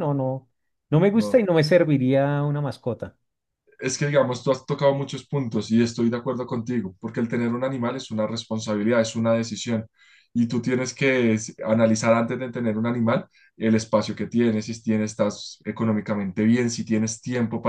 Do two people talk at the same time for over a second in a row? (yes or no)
no